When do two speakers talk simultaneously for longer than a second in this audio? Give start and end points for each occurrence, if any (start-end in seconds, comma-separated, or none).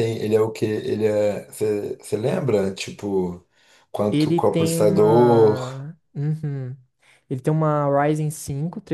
4.1-5.6